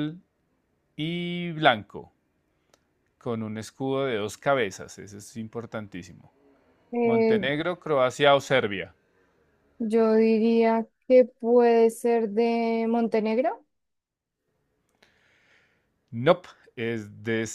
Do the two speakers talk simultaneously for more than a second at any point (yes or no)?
no